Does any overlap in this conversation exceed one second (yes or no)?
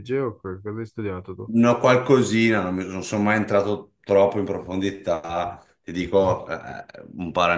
no